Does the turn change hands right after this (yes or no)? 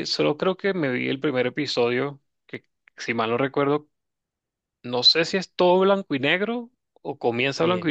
yes